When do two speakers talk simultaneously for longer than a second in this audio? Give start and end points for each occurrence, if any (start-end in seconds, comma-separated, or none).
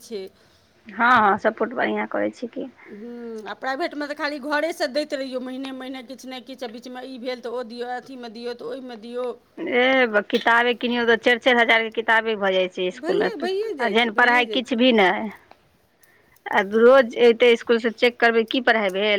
13.0-14.8